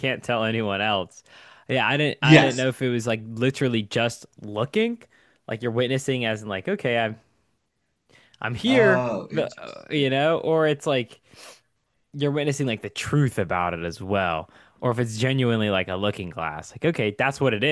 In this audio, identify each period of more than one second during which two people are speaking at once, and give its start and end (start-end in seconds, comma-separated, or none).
8.7-10.1